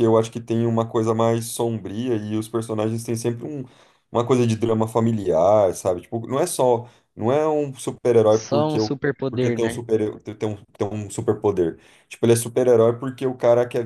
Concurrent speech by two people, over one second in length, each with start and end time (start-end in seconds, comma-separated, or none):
8.3-9.8